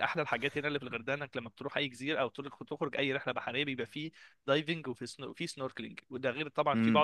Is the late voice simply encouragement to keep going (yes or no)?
yes